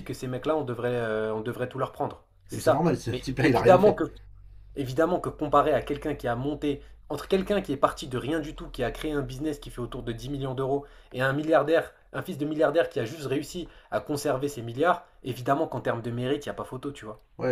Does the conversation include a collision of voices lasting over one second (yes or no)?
yes